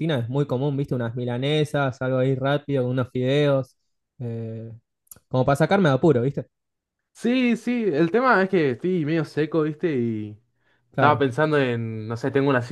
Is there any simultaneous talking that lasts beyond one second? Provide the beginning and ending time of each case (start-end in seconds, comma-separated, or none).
none